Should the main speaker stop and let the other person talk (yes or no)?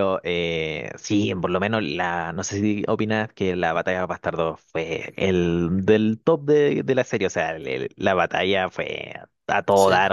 no